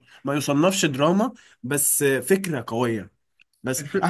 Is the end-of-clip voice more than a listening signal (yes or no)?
no